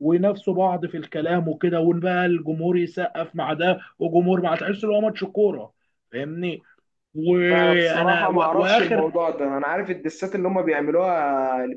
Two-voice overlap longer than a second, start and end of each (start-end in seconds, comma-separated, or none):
7.5-9.1